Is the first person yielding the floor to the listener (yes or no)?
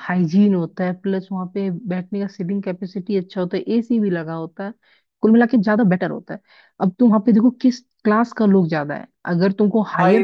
yes